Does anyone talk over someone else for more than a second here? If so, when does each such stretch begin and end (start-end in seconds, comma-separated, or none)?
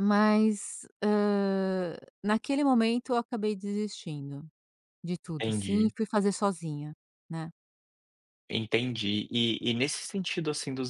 none